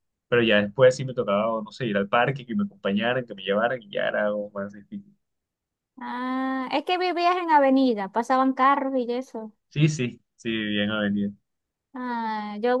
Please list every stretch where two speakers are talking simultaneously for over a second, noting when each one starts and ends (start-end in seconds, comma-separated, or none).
none